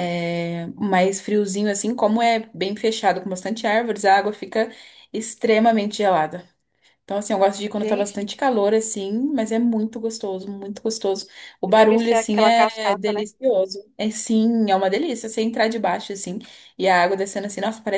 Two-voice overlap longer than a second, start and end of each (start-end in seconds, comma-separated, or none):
11.7-13.2